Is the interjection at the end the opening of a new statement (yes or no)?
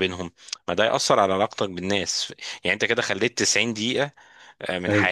no